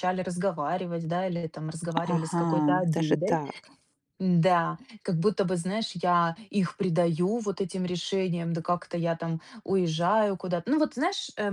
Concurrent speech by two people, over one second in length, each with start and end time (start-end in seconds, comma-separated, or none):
2.1-3.4